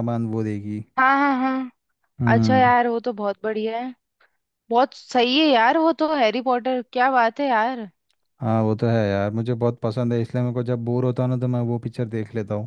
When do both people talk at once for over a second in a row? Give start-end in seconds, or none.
none